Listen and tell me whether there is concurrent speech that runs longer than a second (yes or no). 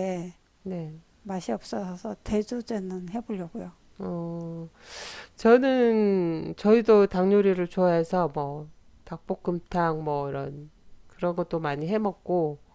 no